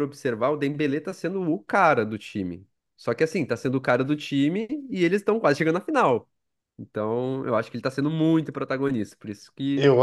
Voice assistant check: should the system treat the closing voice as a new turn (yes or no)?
no